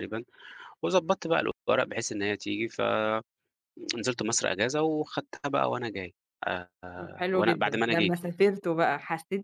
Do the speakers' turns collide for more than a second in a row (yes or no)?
yes